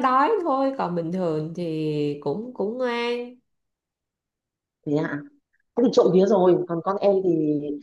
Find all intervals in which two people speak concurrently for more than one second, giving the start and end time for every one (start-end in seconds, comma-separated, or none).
none